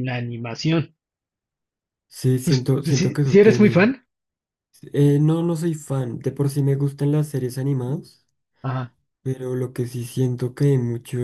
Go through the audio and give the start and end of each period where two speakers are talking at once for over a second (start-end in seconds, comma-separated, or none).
2.4-3.9